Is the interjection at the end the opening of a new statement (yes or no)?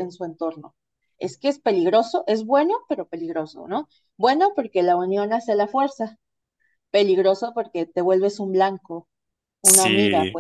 yes